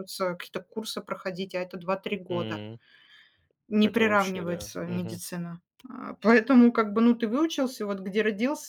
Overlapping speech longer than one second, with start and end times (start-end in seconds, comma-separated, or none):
3.8-5.2